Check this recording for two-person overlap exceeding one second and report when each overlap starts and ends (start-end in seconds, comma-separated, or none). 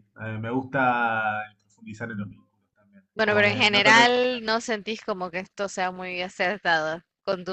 3.1-4.4